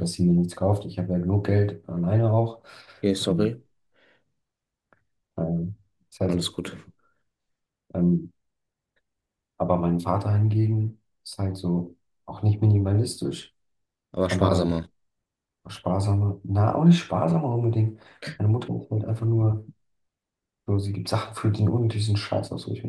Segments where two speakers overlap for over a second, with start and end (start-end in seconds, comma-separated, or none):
none